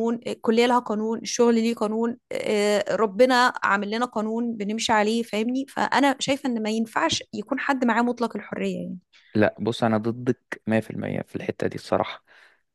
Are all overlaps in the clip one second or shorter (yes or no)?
yes